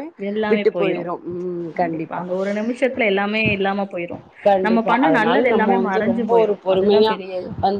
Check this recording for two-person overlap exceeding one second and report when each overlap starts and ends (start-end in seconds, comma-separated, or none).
4.7-7.1